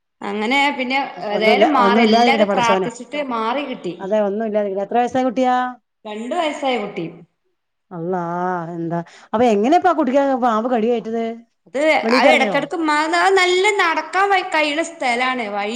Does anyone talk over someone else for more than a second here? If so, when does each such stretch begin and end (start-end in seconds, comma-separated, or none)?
1.4-2.9